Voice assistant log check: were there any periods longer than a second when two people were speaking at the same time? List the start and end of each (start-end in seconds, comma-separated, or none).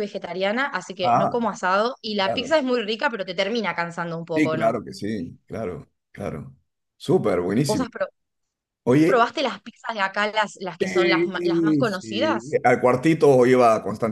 10.8-12.6